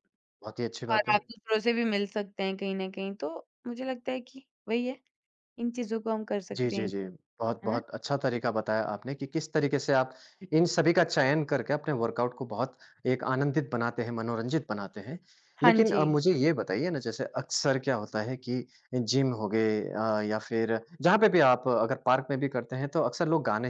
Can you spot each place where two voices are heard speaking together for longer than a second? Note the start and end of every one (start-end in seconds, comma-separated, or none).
none